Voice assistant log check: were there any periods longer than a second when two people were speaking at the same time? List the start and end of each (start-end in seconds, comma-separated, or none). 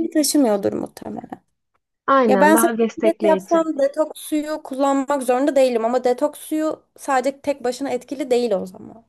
2.3-3.7